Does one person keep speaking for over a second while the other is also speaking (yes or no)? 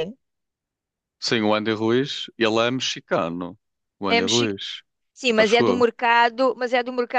no